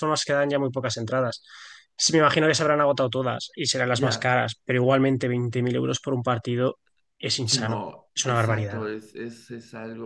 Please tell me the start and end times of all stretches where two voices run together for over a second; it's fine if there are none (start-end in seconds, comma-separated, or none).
7.4-8.9